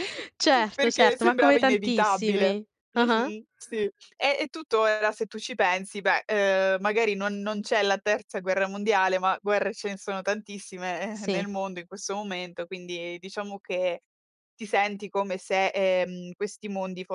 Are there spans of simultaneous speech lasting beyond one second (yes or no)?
yes